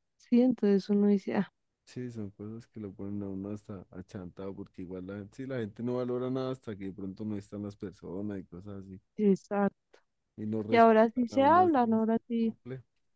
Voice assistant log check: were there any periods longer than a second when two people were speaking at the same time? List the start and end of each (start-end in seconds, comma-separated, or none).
10.7-12.5